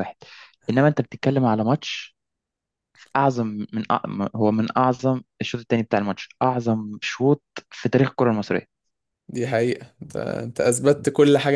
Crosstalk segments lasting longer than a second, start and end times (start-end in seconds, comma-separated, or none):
none